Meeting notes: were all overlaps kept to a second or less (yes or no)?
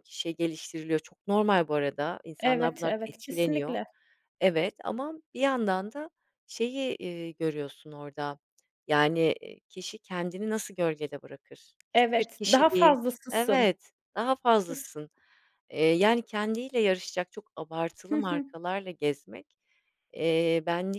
no